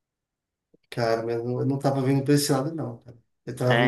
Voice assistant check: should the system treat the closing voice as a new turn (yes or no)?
no